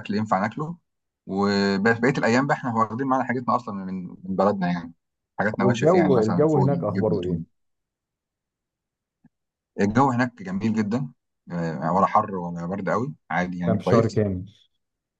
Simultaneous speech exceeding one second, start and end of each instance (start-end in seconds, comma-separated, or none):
5.6-7.4